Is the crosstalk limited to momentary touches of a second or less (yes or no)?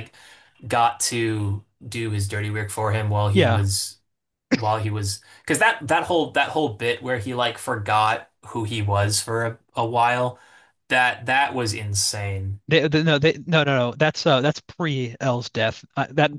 yes